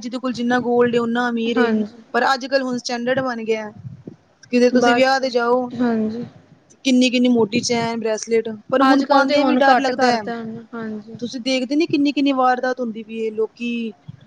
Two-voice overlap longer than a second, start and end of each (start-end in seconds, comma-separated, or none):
8.9-10.2